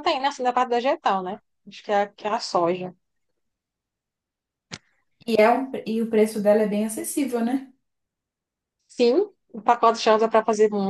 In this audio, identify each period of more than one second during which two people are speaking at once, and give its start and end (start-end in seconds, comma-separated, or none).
none